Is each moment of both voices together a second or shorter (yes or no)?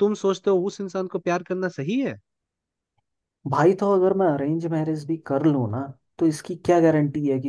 yes